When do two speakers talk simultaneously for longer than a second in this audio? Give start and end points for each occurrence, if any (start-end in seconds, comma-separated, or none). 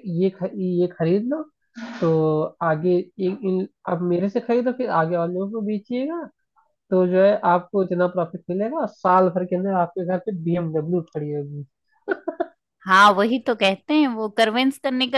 none